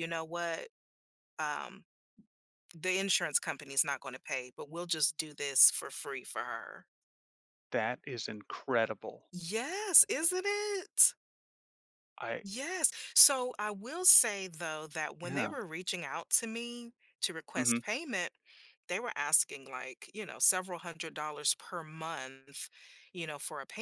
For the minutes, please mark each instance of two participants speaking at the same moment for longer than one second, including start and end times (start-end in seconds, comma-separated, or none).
none